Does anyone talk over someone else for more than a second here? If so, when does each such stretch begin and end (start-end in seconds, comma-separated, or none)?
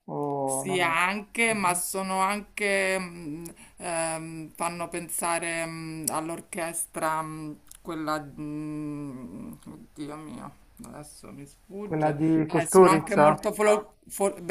0.5-1.8, 11.8-13.4